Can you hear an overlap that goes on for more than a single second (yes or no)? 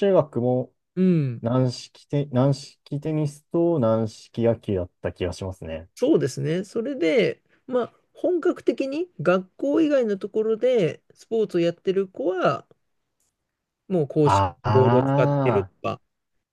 yes